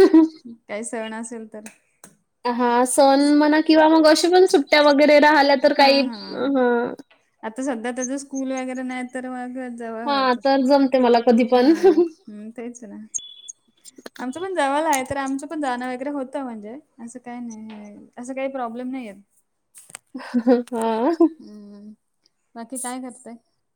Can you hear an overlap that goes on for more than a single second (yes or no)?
no